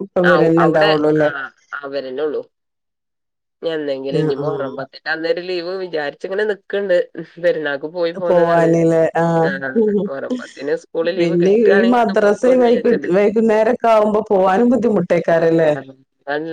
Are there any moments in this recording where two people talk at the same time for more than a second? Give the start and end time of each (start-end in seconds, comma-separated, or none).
11.2-13.1